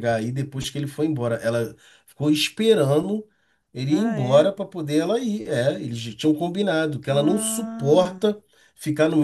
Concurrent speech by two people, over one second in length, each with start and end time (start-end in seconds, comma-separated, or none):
7.1-8.3